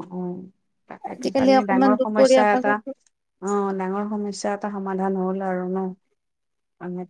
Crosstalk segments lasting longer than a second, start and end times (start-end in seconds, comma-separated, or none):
1.1-2.9